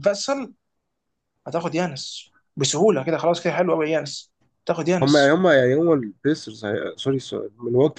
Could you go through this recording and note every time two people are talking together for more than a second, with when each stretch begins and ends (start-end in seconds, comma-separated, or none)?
none